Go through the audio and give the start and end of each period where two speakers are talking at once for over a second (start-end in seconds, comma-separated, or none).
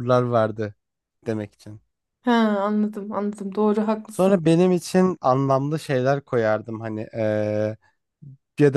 none